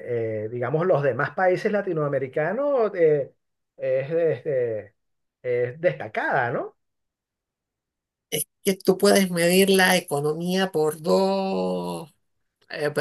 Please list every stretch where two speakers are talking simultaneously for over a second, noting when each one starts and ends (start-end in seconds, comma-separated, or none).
none